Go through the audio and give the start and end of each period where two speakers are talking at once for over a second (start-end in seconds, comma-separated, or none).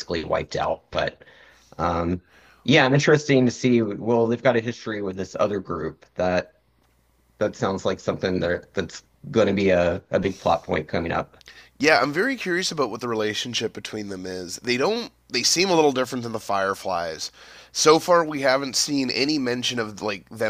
none